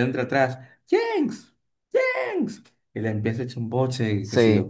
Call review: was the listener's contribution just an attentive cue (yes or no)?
no